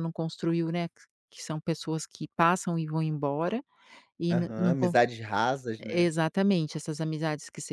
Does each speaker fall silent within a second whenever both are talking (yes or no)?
yes